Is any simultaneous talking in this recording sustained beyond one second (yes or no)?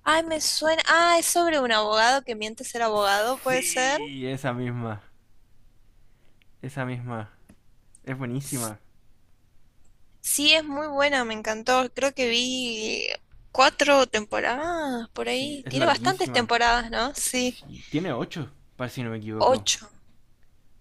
yes